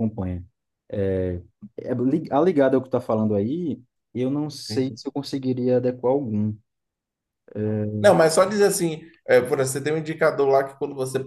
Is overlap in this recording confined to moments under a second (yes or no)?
yes